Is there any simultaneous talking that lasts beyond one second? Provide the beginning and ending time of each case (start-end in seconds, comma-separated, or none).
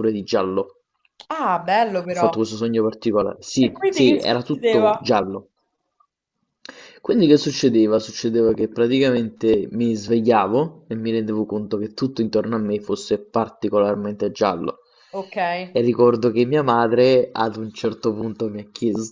3.6-5.0